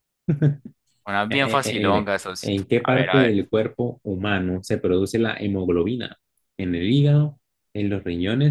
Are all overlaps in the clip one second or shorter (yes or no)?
no